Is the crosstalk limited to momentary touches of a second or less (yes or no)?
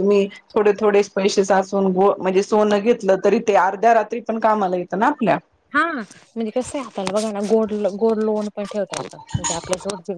yes